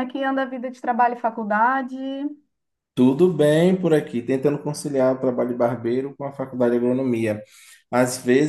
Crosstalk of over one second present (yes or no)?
no